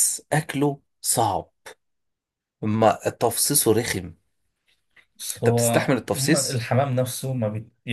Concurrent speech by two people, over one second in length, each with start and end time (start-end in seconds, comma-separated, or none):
5.4-6.7